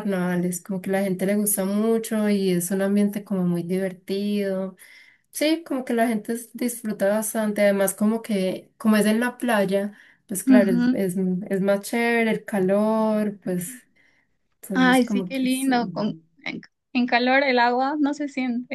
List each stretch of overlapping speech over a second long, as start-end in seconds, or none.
14.7-16.2